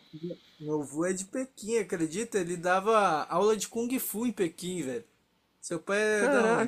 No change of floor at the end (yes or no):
no